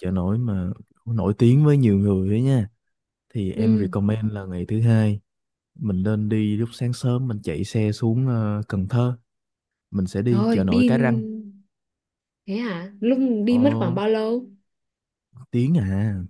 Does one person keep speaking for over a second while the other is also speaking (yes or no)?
no